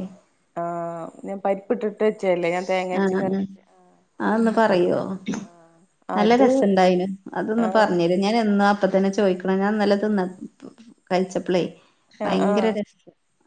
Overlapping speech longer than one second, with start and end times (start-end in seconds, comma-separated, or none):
none